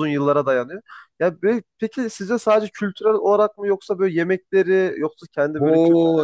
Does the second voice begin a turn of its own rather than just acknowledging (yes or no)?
yes